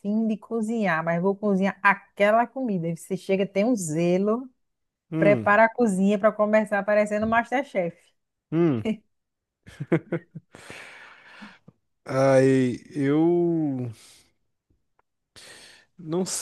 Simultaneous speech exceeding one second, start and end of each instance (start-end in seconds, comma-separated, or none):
none